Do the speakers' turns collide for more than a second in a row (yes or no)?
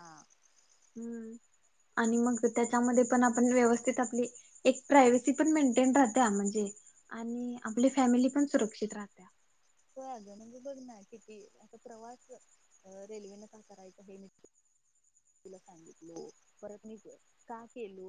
no